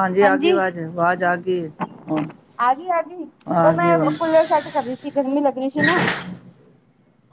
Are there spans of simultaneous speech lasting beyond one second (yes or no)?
no